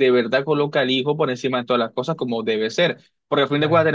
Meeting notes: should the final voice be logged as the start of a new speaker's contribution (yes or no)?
no